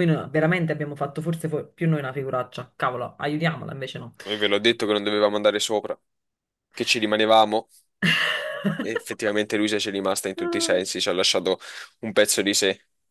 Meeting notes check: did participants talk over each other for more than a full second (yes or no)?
no